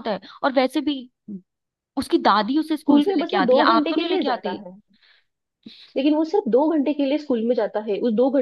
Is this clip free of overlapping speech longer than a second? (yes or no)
no